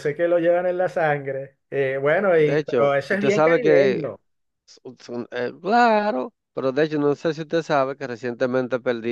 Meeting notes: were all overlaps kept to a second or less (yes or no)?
no